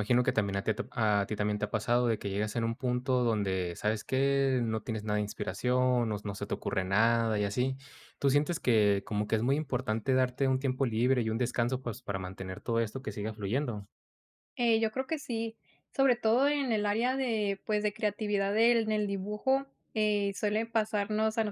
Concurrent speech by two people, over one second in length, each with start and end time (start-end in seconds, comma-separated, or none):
none